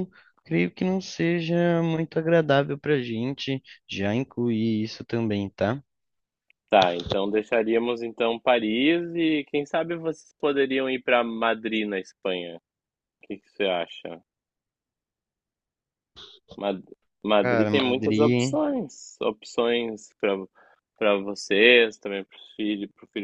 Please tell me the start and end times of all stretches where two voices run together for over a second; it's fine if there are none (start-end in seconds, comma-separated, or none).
17.4-18.6